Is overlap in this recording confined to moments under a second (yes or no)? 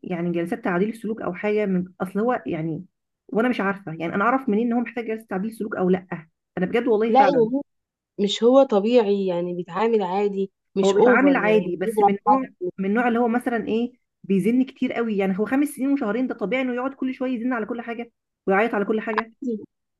no